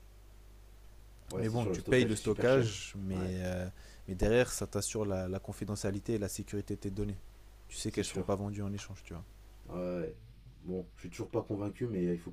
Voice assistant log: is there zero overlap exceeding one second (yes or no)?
no